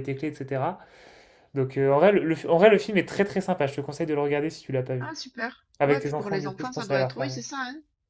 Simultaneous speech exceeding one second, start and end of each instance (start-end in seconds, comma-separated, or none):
5.8-7.3